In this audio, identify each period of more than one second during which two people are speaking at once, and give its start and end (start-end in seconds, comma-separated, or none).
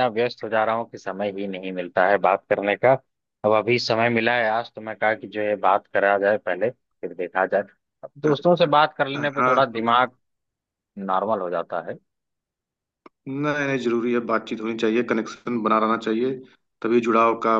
none